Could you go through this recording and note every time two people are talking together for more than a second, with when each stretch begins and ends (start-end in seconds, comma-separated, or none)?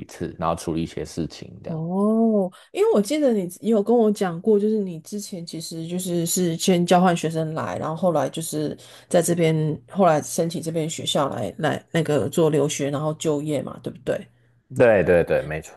none